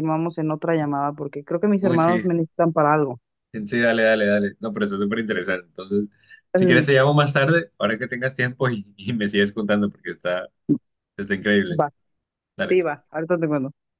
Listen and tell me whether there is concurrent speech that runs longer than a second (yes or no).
no